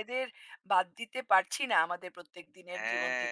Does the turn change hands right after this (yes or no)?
yes